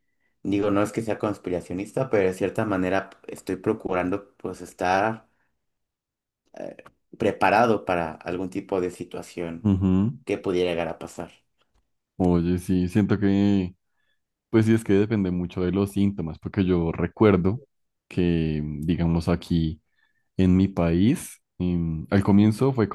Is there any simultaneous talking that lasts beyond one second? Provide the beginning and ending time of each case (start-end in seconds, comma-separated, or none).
none